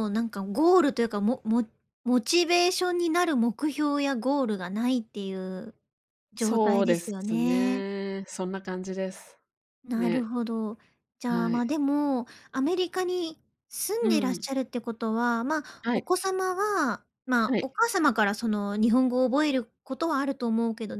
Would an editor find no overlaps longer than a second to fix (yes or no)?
no